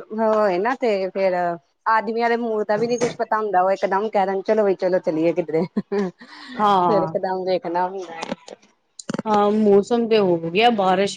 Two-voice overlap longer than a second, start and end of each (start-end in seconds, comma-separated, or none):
none